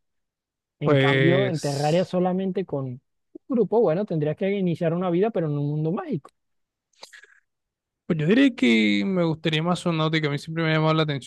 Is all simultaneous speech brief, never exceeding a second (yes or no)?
no